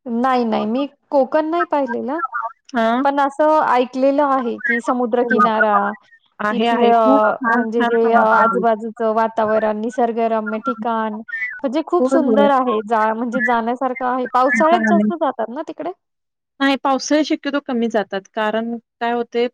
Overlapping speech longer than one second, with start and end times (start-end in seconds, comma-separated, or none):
6.5-8.6